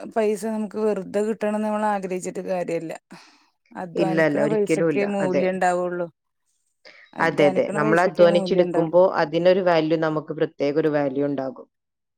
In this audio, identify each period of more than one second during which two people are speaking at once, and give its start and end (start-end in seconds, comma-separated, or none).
4.0-5.4, 7.3-8.8